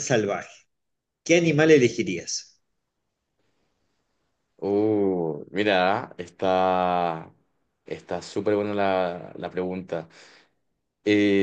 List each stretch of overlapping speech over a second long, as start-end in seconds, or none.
none